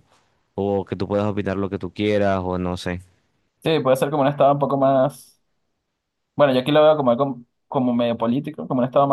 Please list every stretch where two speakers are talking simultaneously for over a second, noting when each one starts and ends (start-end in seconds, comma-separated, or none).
none